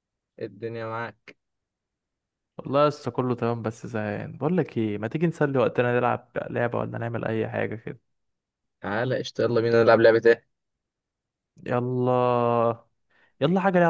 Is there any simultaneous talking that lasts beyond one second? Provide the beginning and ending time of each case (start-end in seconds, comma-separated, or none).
none